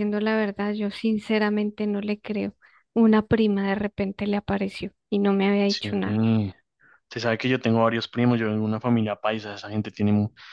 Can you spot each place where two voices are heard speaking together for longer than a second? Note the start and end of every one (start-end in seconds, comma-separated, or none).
none